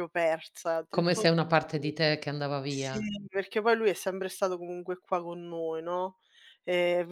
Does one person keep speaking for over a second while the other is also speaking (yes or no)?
no